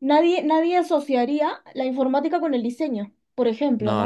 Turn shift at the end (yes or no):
yes